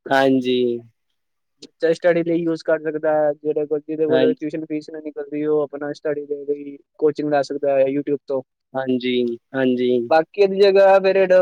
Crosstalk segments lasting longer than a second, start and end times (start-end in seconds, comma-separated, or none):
none